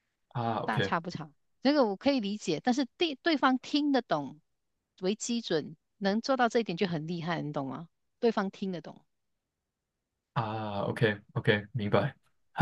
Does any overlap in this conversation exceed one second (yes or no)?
no